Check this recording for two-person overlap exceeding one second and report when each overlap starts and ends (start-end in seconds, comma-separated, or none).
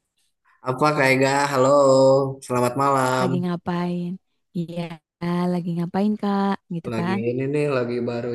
none